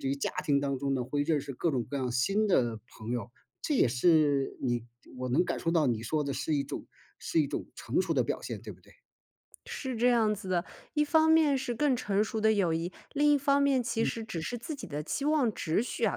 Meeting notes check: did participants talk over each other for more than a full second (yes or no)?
no